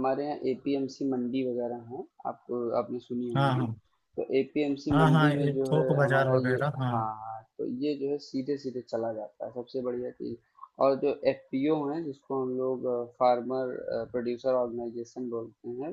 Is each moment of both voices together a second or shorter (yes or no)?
no